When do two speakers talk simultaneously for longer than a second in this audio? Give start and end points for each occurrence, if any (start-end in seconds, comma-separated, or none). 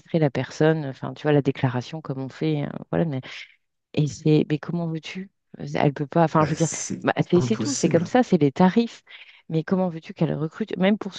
6.4-8.1